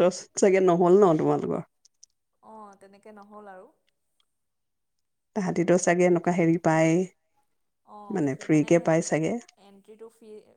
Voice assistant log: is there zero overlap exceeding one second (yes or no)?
yes